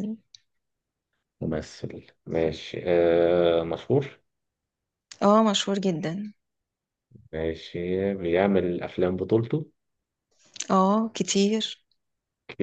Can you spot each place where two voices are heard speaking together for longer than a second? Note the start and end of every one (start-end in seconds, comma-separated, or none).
none